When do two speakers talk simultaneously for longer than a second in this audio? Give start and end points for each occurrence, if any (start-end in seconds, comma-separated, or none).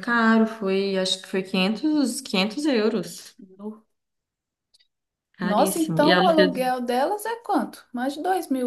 5.4-6.6